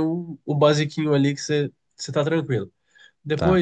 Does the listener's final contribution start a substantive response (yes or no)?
no